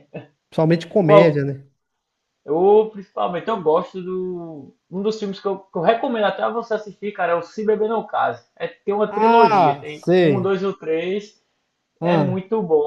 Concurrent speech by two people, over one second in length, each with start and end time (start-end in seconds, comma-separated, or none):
9.1-10.6